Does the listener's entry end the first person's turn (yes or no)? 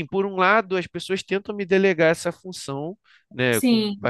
no